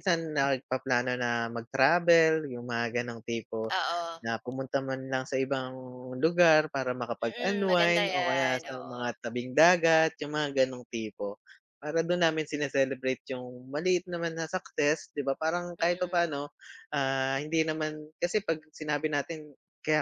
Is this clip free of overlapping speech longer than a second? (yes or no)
no